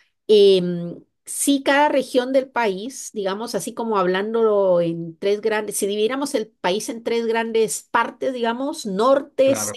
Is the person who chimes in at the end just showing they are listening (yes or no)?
yes